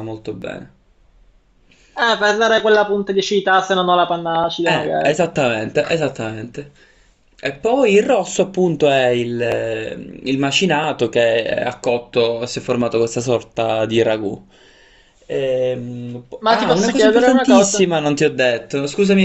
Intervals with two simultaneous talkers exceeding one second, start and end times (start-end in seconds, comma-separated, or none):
16.4-17.9